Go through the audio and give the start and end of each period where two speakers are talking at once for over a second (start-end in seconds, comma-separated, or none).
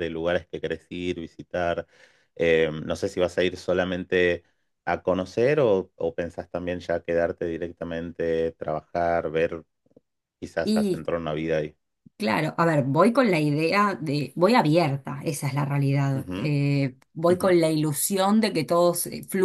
none